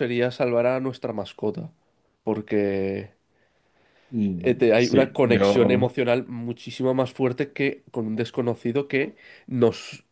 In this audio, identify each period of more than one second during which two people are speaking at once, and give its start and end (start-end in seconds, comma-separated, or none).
4.4-5.9